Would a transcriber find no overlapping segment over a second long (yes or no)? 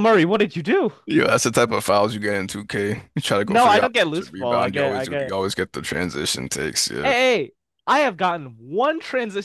no